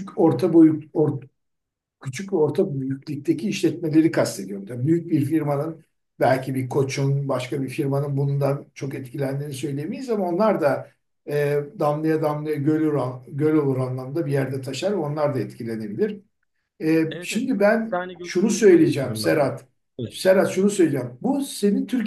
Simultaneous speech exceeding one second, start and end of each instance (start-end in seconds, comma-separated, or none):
17.1-19.4